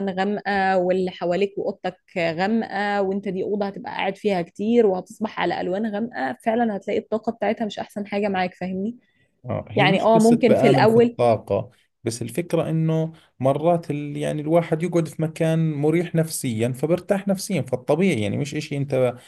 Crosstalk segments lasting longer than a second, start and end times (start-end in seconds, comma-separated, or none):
9.8-11.2